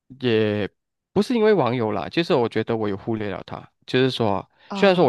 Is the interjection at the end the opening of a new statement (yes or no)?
no